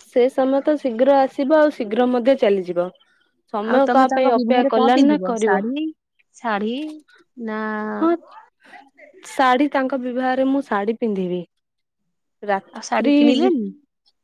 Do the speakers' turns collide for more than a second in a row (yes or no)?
yes